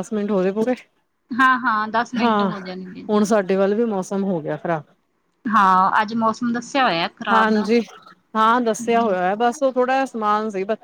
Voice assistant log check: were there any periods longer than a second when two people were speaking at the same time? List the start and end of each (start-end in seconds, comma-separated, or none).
none